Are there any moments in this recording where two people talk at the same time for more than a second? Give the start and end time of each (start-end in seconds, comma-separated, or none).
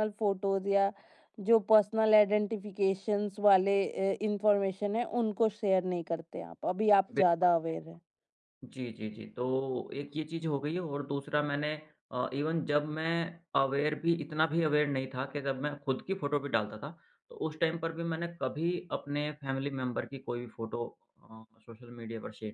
none